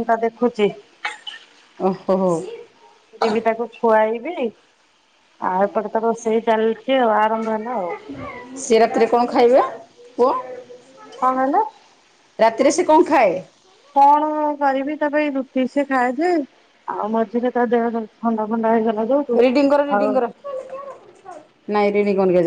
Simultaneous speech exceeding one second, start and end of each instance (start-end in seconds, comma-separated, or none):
none